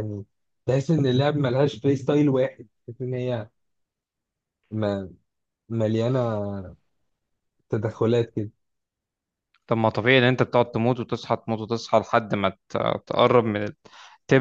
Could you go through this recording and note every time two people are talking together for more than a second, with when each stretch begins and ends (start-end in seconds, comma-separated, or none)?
none